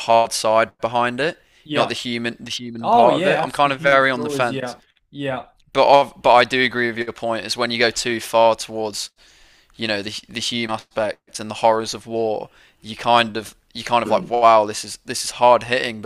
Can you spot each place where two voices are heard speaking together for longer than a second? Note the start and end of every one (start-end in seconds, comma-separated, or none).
2.8-4.8